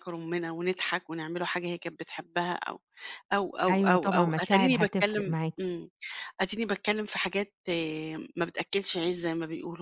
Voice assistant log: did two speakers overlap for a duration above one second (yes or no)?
yes